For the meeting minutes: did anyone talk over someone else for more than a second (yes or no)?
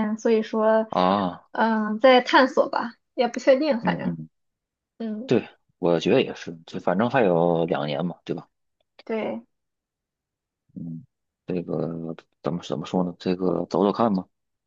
no